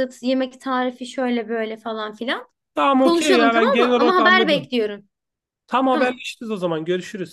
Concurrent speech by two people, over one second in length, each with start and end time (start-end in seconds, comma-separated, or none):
3.0-4.7